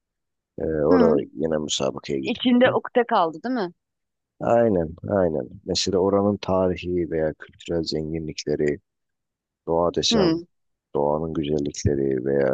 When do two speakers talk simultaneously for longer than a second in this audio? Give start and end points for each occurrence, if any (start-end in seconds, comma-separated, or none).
none